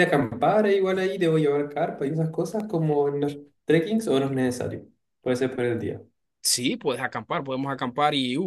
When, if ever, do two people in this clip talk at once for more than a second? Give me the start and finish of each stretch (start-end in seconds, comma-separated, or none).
none